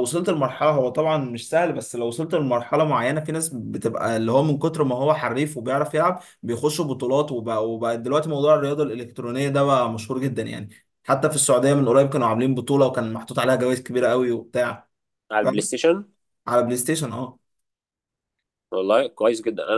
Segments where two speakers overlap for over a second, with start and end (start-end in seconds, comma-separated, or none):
none